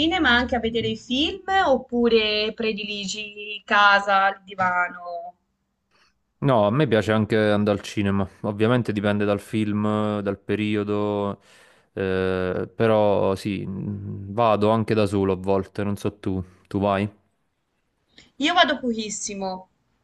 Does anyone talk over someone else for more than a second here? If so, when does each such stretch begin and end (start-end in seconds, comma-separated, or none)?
none